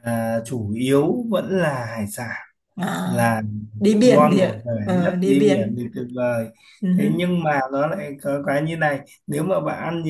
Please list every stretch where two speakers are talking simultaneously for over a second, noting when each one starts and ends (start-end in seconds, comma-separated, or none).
4.0-5.8